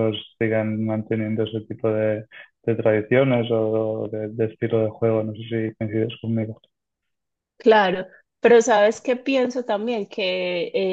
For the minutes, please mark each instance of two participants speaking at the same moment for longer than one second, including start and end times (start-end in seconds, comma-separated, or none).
none